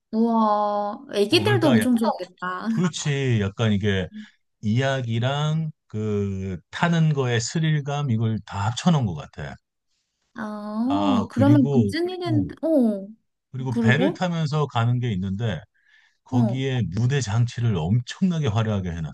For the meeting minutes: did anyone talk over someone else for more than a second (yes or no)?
yes